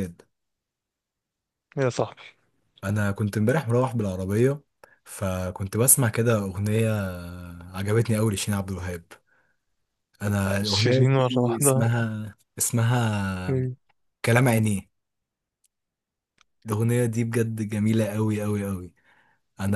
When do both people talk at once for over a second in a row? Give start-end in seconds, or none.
10.6-11.9